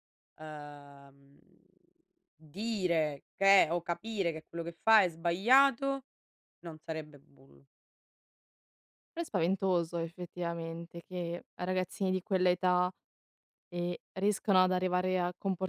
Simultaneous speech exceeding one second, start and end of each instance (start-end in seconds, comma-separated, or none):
none